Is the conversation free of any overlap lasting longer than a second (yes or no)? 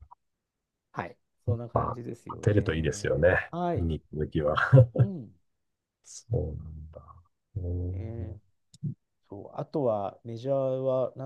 no